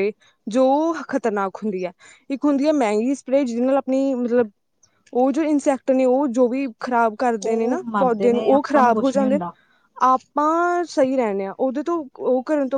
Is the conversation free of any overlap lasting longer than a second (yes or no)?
no